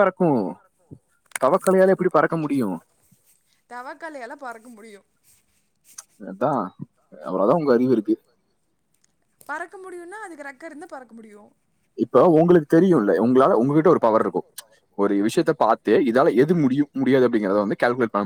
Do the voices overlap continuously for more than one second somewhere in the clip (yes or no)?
no